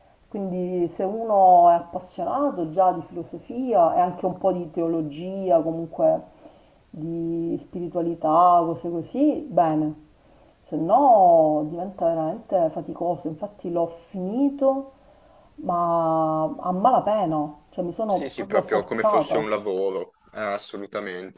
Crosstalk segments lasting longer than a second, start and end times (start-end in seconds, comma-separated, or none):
18.0-19.4